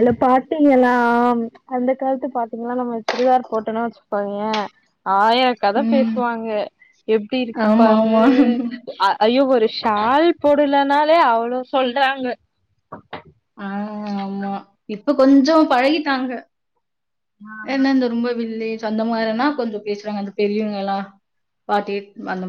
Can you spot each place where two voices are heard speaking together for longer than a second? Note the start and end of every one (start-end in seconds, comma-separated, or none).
none